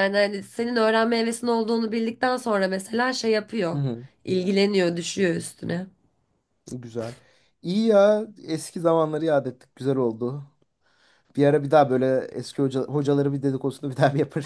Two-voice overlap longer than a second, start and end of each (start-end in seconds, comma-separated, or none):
none